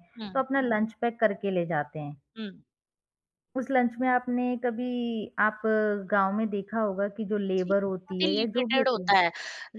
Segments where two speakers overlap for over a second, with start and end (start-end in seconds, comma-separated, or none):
7.6-9.1